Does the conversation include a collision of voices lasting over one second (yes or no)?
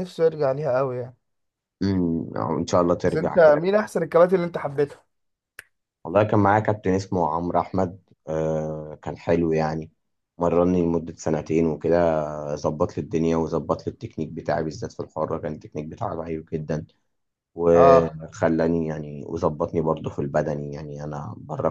no